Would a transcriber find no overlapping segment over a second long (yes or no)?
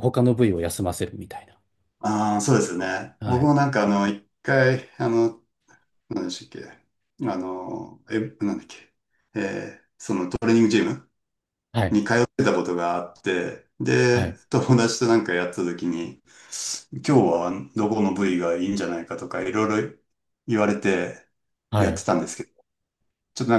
yes